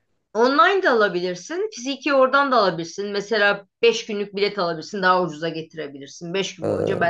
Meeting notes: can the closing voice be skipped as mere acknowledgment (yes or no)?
yes